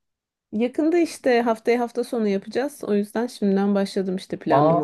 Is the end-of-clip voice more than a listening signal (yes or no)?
yes